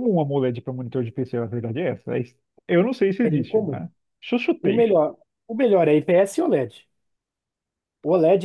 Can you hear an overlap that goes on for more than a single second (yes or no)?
no